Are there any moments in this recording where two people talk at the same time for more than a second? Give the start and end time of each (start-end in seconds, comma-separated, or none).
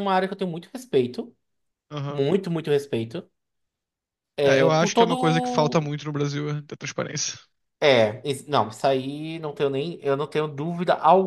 4.4-5.9